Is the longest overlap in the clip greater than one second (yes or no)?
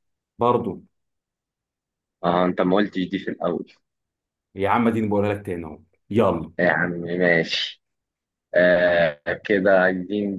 no